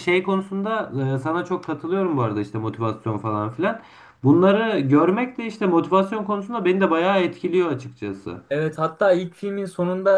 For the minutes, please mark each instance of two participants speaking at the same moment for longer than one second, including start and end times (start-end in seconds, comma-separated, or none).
none